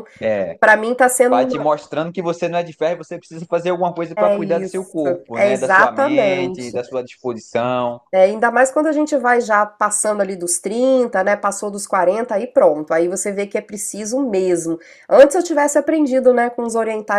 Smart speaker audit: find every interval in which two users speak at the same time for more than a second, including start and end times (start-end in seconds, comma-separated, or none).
4.2-6.8